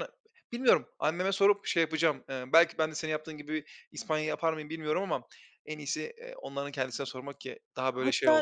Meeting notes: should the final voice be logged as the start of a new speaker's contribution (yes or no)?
yes